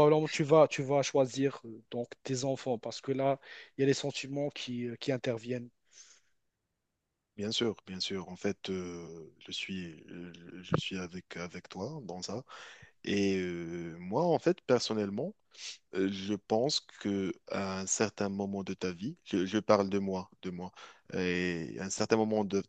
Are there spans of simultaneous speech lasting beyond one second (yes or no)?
no